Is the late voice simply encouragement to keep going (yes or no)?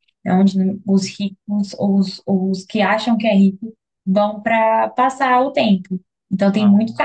yes